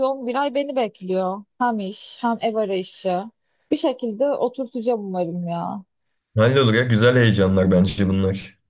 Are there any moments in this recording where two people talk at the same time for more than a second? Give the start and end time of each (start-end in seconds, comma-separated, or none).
none